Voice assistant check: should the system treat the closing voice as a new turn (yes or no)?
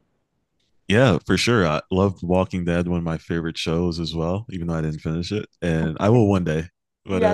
yes